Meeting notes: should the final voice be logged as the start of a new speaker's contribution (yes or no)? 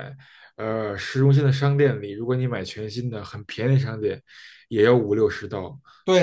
yes